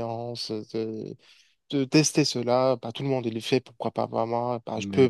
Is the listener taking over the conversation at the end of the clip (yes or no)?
no